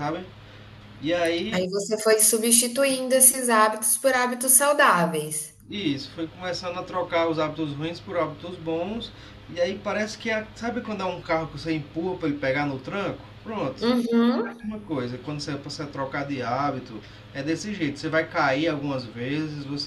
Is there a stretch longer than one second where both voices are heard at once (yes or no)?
no